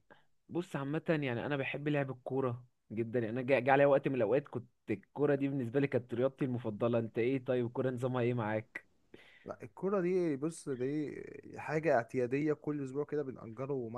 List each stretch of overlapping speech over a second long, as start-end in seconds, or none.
none